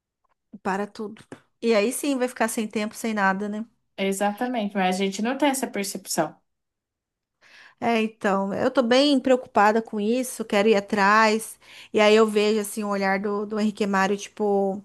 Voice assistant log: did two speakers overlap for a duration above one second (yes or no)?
no